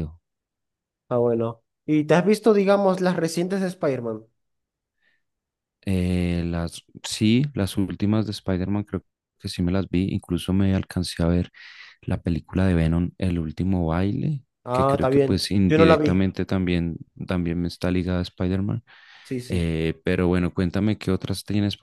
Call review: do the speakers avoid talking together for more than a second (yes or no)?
no